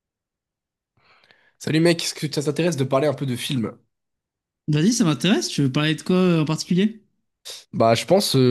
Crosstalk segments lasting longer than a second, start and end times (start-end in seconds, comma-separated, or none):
none